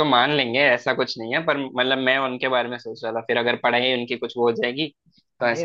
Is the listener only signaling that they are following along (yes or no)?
no